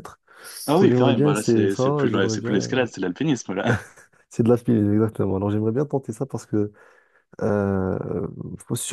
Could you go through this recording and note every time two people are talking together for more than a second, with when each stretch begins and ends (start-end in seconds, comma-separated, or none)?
0.7-2.6